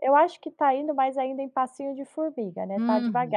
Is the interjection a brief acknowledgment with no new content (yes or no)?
no